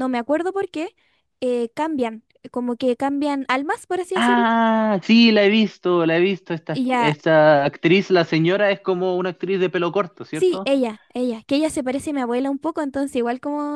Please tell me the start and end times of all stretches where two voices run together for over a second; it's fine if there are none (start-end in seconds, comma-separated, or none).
none